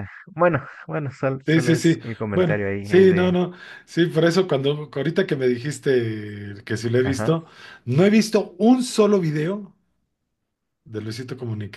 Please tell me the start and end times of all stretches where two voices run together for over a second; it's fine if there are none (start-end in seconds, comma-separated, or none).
1.4-3.4